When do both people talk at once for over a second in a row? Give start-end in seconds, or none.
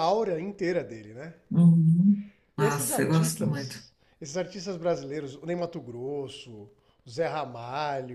2.6-3.8